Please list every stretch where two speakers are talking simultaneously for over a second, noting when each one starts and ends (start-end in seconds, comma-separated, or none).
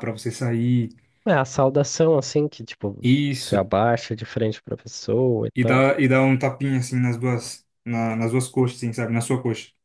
none